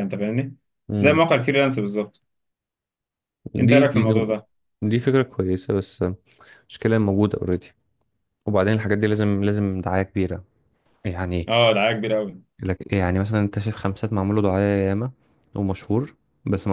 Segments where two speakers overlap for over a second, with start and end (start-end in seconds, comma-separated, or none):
none